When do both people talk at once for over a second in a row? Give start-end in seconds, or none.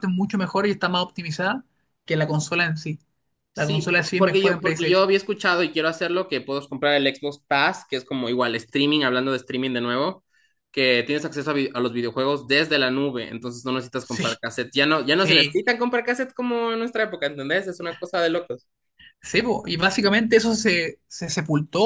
3.5-5.1